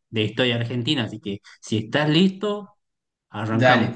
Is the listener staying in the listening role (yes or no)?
no